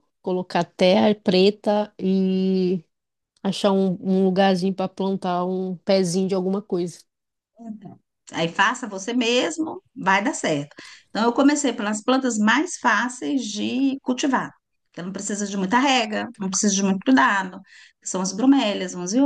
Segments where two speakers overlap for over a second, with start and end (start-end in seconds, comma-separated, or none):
none